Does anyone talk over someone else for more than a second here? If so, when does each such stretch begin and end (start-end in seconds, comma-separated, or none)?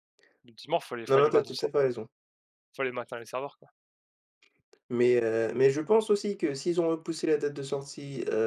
none